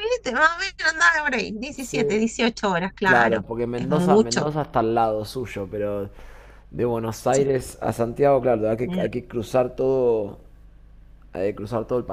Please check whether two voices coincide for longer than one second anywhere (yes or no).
yes